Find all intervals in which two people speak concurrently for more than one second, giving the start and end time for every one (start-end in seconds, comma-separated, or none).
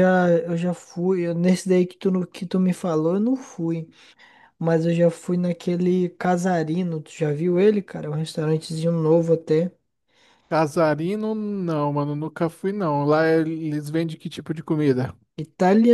none